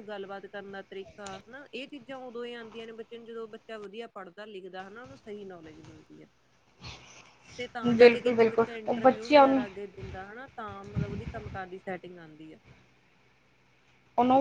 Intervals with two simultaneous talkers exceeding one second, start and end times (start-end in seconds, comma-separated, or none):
8.0-9.6